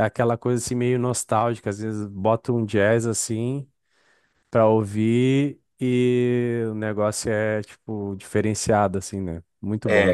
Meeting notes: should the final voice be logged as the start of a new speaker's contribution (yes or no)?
yes